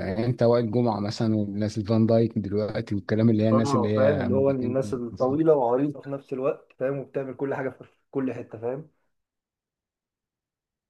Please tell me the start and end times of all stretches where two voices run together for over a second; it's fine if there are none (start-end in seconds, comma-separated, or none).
3.5-5.4